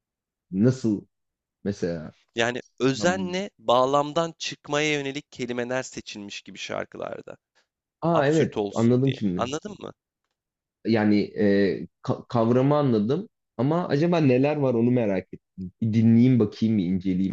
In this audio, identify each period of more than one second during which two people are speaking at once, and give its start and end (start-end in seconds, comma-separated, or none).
8.1-9.5